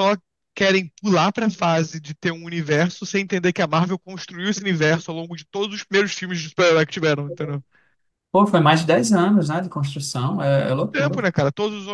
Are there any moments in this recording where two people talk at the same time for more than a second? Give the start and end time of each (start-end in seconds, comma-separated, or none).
none